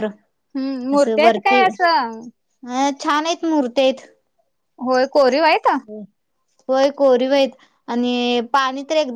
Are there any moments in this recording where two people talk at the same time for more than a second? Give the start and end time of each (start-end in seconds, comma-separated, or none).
0.9-2.2